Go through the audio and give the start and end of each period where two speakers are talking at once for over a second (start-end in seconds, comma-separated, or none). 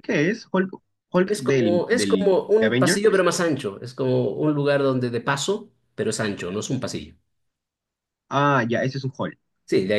1.2-3.3